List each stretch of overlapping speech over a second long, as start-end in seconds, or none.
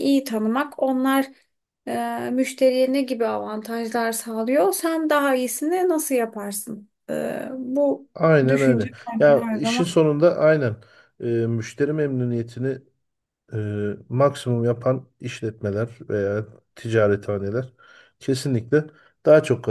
8.5-9.9